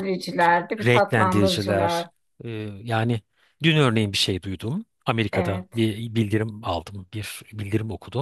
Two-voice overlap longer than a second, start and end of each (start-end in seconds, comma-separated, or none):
0.8-2.1